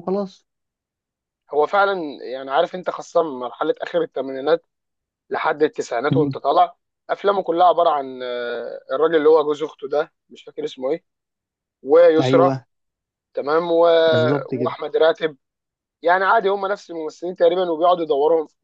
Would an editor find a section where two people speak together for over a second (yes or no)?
no